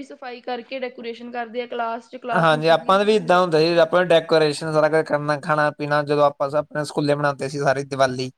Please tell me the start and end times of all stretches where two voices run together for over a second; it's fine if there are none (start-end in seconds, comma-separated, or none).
2.4-4.0